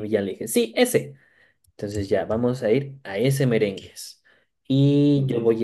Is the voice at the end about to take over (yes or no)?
no